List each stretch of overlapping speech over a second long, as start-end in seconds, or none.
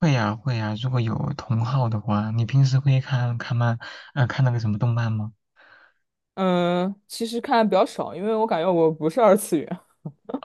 none